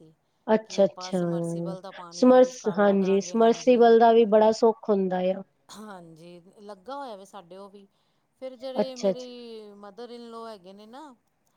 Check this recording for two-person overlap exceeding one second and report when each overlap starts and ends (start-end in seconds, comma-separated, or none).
2.2-4.0